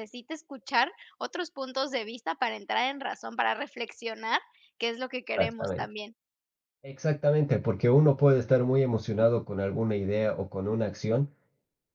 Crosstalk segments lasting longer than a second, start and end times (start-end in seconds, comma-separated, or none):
none